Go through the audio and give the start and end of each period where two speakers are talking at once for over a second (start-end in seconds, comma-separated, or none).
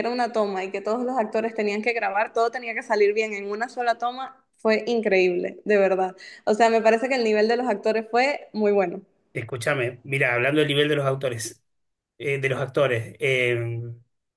none